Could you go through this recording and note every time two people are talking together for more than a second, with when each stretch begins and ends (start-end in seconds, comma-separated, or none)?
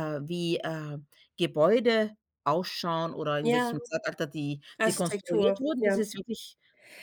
4.8-6.0